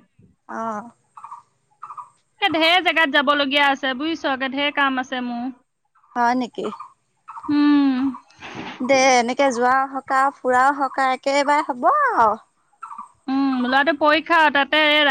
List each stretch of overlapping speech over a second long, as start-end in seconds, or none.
none